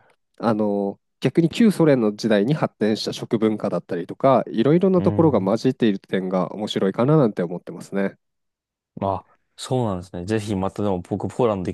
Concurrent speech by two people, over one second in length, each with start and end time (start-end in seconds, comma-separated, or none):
none